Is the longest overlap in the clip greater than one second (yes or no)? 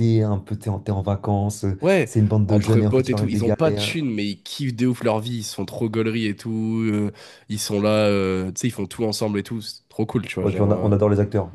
yes